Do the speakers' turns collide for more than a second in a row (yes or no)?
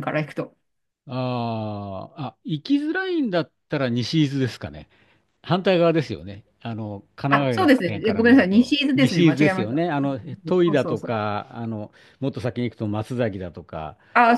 yes